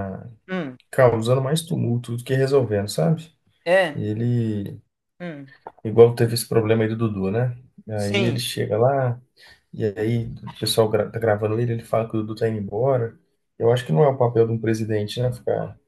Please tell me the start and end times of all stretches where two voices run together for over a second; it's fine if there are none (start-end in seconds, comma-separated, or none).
none